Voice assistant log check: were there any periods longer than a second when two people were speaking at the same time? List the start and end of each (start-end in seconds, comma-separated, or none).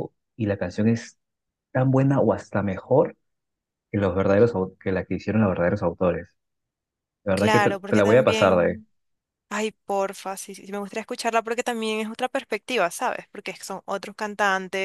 7.3-8.8